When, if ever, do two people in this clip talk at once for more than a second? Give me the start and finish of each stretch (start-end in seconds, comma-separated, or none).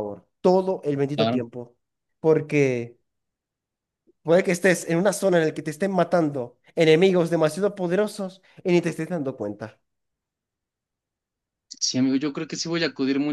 none